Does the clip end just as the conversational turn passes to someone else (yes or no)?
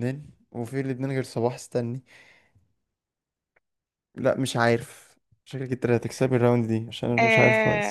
yes